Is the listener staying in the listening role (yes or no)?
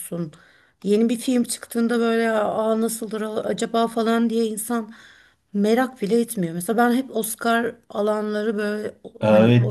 no